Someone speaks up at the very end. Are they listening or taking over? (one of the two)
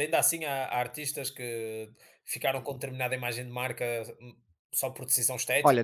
taking over